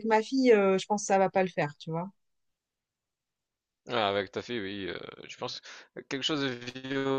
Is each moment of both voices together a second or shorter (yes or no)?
yes